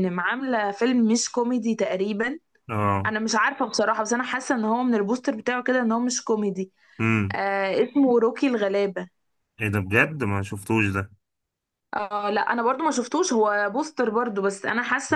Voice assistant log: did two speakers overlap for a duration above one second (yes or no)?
no